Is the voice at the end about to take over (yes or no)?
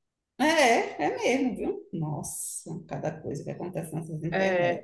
yes